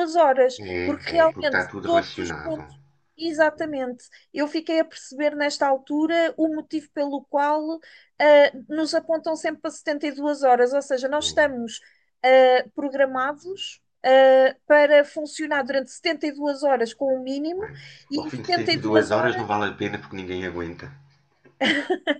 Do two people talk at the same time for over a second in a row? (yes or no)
yes